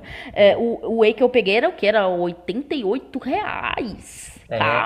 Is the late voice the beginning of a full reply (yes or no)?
yes